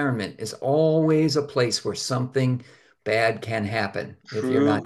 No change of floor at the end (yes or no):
no